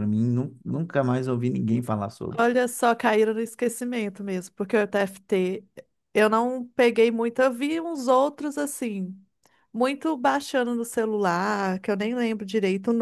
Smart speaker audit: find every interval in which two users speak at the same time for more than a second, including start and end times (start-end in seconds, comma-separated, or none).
none